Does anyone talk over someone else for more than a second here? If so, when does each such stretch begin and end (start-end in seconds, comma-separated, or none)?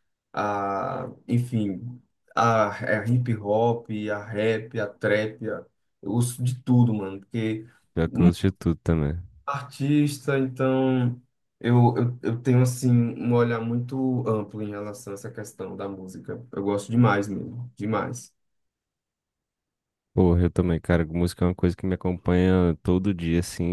none